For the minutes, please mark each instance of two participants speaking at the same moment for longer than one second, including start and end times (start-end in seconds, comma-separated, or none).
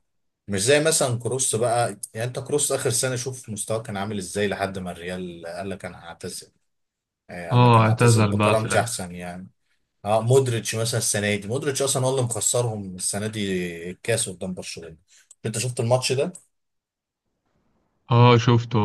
7.5-9.0